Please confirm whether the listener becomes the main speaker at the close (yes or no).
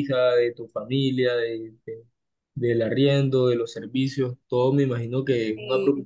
no